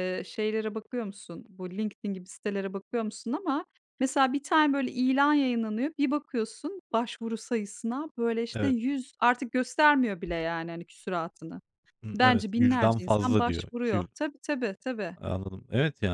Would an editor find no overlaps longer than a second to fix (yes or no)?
no